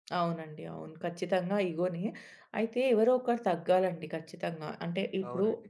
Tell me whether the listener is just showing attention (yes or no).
yes